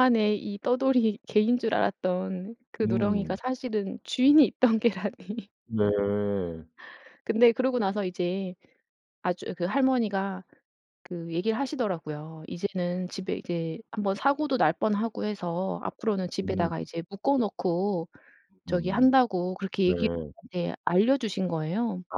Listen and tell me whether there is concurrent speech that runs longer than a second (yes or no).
no